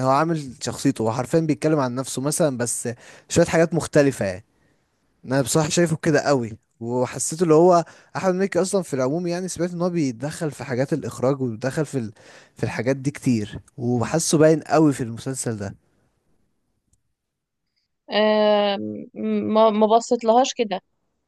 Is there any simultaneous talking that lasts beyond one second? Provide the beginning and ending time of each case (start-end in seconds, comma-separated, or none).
none